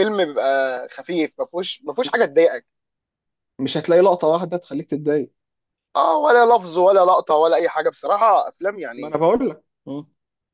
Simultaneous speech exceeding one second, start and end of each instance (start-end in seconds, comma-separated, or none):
none